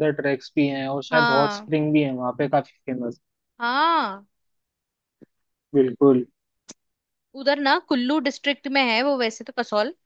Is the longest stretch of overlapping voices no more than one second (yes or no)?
yes